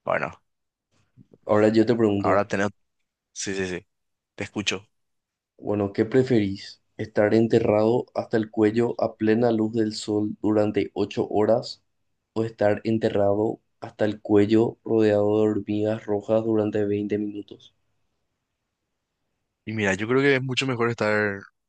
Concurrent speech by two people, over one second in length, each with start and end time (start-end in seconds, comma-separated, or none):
none